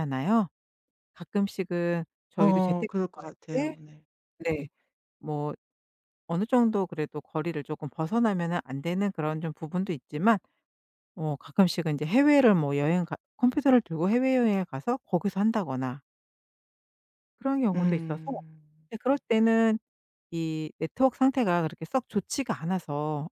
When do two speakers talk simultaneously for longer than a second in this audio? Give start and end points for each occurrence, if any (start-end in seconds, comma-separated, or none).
2.4-3.7